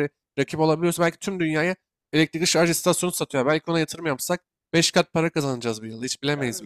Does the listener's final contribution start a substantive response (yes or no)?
yes